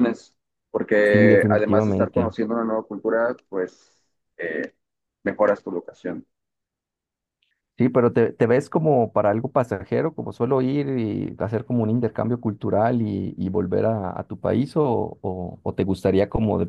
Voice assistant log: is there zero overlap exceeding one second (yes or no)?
no